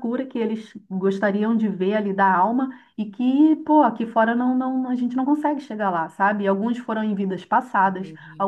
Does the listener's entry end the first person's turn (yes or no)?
no